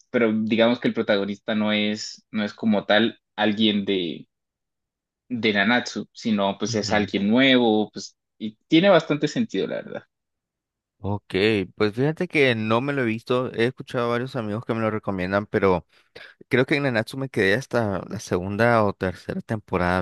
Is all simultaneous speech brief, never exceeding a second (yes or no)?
yes